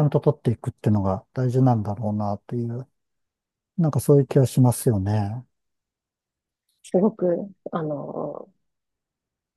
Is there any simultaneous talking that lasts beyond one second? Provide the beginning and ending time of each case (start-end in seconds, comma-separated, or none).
none